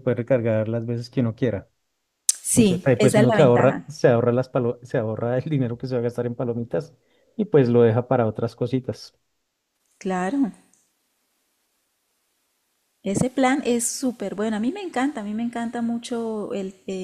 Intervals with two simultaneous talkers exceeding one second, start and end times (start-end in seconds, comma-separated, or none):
2.5-3.9